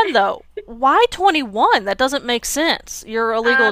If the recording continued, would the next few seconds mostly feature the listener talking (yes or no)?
yes